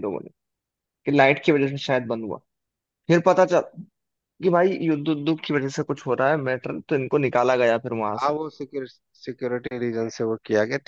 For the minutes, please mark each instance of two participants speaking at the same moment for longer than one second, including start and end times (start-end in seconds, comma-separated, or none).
none